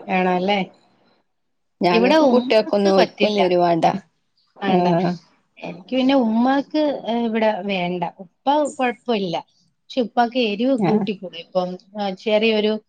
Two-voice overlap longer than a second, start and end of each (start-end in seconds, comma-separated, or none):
1.9-3.4